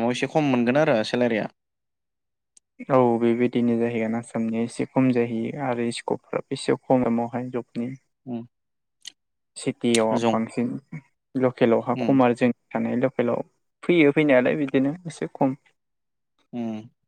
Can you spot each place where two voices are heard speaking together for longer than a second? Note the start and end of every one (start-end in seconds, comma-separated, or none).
none